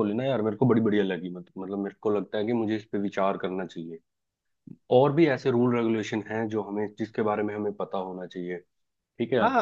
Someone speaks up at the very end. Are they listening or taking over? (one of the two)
taking over